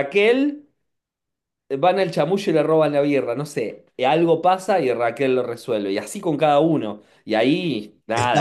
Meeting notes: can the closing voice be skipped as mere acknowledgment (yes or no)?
no